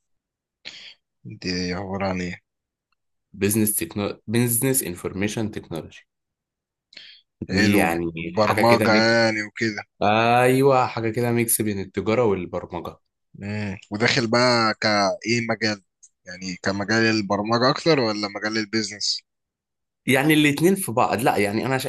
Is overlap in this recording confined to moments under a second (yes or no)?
no